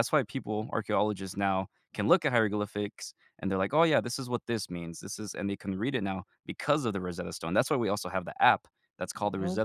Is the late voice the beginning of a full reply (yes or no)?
no